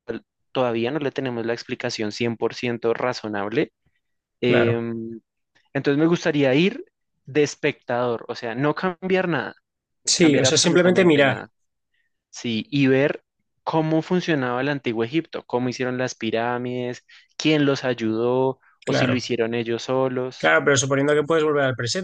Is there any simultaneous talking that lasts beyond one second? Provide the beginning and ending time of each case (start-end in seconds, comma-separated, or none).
10.2-11.4